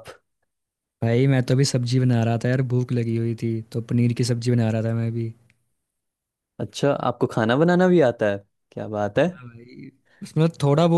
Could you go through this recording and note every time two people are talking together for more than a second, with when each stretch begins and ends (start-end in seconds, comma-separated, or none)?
none